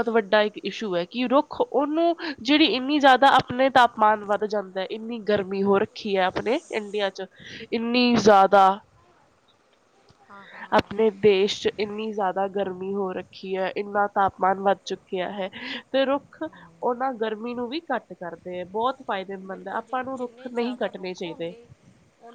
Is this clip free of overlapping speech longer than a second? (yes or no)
no